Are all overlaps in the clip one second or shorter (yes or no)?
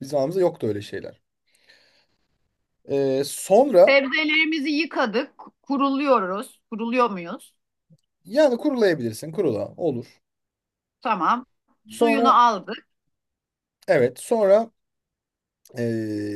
yes